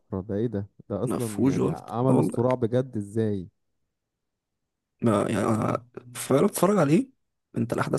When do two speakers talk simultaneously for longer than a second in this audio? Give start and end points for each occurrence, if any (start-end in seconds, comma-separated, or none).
1.1-2.4